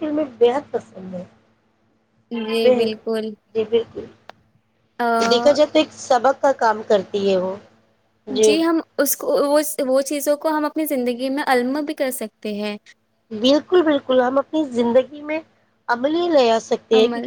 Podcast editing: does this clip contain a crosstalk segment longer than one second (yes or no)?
no